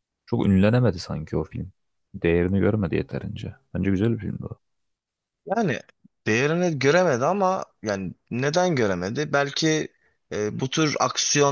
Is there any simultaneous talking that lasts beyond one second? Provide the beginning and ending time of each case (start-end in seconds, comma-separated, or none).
none